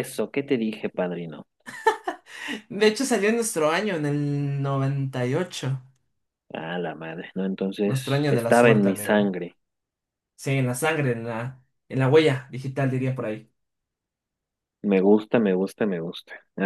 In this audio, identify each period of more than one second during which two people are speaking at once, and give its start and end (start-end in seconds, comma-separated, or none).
7.8-9.3